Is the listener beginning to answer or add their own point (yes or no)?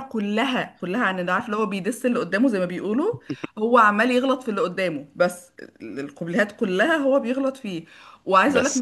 no